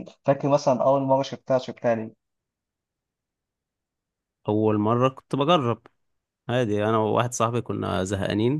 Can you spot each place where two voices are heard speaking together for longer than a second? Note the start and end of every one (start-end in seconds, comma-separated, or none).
none